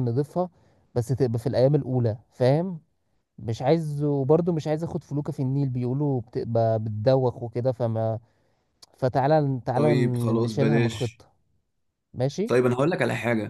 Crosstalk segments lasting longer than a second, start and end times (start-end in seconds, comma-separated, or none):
9.7-11.2